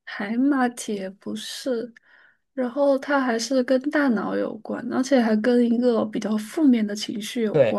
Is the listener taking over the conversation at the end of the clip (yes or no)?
yes